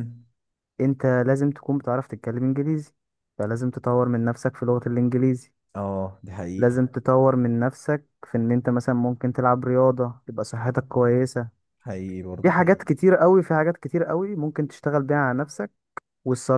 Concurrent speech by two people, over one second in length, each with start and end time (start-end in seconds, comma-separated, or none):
none